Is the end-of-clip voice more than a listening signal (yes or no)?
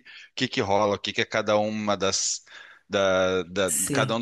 no